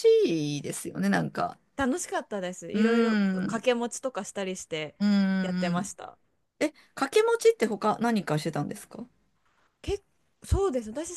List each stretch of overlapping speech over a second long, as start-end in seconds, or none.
none